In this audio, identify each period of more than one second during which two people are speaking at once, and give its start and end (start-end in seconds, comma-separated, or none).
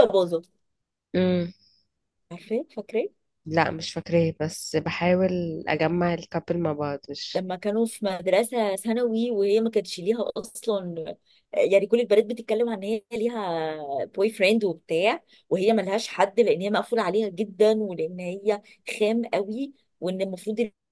none